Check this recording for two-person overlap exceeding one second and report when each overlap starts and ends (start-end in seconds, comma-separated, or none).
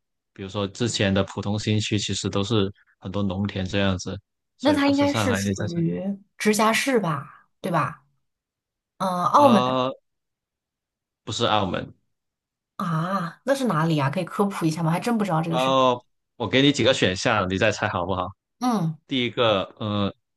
4.6-5.8